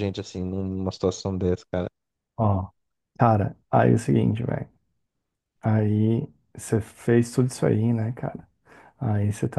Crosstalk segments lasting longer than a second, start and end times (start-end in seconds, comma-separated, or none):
none